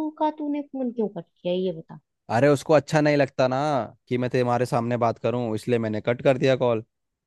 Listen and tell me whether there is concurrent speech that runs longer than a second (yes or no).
no